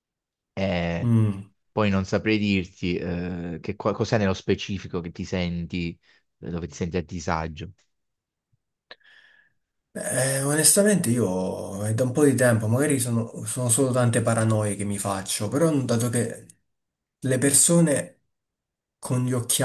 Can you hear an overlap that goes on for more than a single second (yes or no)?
no